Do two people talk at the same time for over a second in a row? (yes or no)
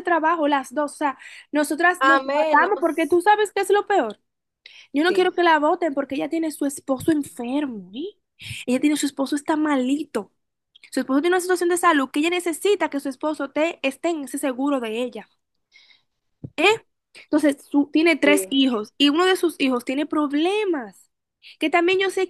yes